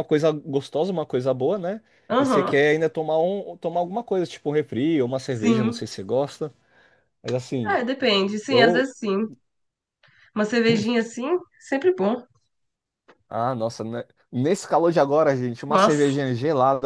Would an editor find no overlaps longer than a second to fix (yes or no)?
yes